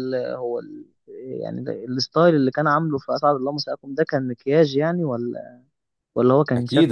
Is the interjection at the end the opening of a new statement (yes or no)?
yes